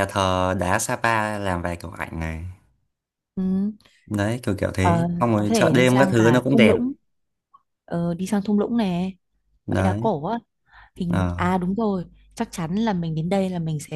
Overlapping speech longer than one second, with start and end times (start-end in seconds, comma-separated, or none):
4.8-6.8